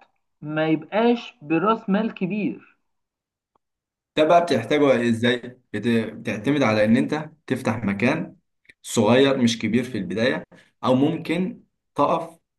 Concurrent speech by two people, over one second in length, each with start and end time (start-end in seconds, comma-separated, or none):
none